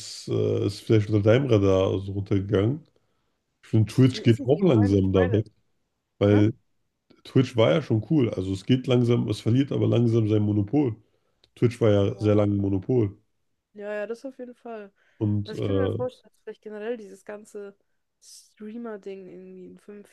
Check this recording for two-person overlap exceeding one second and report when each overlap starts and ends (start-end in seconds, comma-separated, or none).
4.1-5.4